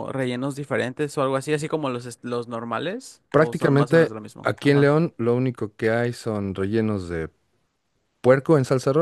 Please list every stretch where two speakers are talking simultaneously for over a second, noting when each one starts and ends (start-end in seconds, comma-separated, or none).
3.3-4.9